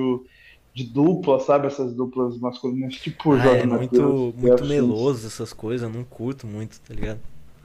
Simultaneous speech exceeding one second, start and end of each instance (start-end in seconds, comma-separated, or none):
3.3-5.1